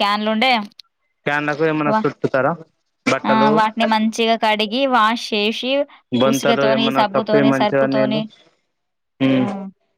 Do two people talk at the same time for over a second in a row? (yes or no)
yes